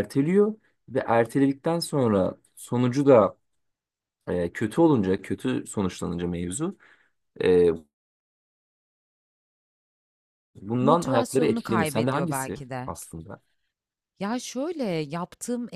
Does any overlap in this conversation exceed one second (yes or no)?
yes